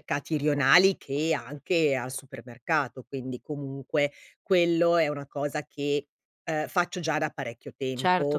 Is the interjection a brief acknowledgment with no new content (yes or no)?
no